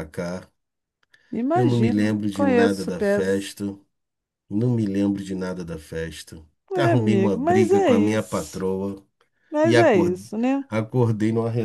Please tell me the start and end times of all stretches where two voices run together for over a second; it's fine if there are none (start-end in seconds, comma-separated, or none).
1.5-3.5, 6.7-8.6